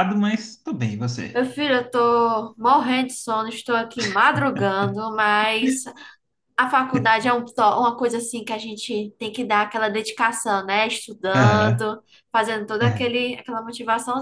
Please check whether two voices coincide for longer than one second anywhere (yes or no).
no